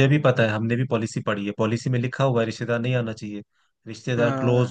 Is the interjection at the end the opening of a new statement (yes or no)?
no